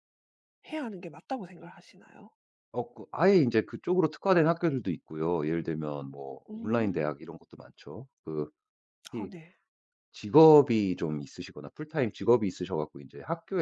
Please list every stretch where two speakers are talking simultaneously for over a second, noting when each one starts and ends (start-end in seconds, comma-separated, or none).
none